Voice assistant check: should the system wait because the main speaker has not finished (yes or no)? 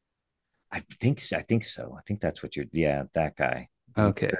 yes